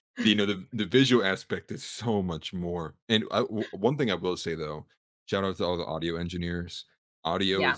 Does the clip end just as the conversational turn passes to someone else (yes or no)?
no